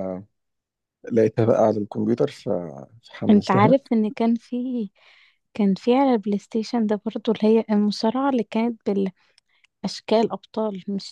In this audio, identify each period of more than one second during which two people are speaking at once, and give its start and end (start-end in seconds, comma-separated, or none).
none